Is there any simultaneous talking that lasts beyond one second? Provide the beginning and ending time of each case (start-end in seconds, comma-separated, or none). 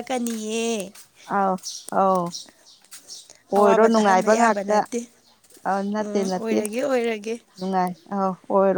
3.5-4.8